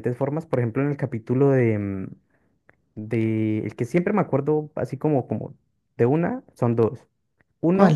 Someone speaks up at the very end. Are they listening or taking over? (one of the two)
listening